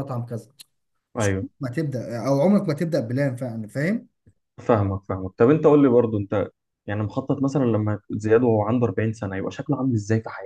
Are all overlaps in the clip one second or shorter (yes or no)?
yes